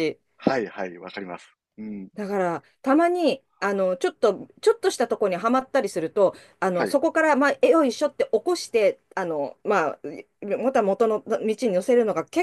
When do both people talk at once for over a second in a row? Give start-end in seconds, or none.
none